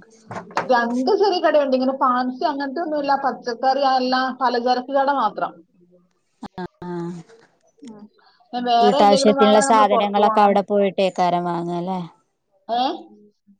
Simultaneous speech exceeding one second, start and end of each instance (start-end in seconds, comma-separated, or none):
8.8-10.6